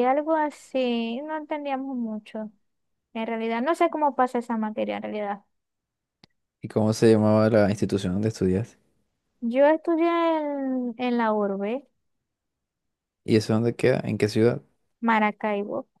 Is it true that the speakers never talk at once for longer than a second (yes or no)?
yes